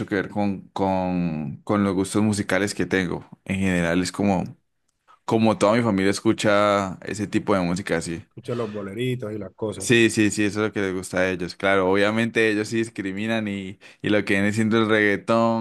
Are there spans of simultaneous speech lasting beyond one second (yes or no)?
no